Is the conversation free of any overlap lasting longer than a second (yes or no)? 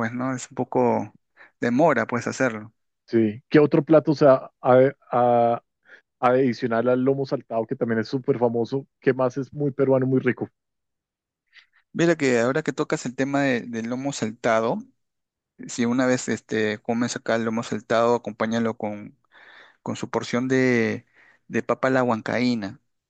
yes